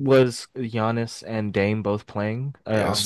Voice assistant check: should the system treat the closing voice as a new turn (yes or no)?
yes